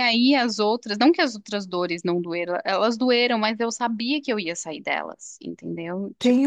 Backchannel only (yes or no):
no